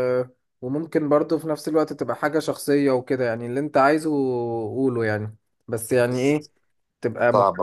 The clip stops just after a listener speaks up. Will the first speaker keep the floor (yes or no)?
yes